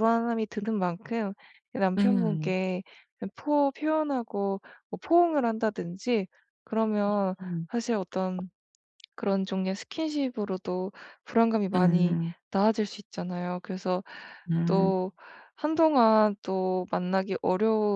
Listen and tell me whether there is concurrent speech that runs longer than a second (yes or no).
no